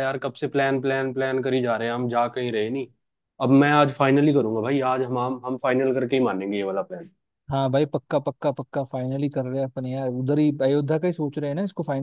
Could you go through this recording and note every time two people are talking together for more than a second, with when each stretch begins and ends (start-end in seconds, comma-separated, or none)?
none